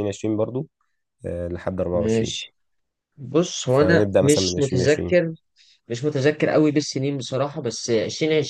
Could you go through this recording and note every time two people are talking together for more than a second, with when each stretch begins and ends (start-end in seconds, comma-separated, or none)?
3.7-5.2